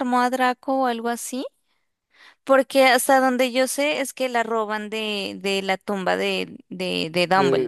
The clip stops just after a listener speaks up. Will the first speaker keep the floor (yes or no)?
no